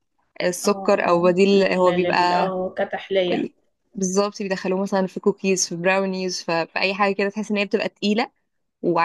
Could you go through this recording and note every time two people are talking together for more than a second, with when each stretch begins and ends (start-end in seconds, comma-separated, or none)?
0.7-2.5